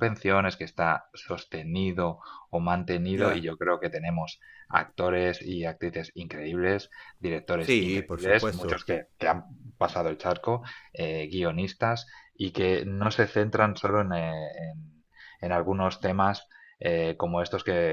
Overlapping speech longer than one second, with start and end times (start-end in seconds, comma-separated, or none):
7.6-8.8